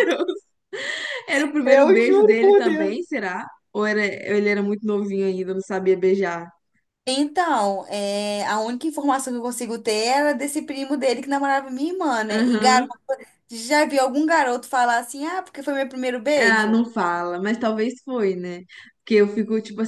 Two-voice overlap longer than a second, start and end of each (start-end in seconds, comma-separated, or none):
1.6-3.0